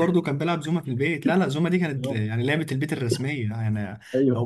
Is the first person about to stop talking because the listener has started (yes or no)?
no